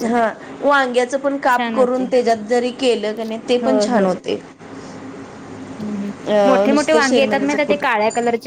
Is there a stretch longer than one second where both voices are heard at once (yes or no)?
yes